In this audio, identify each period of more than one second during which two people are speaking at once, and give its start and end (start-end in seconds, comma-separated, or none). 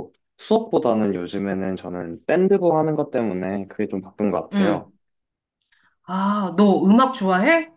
none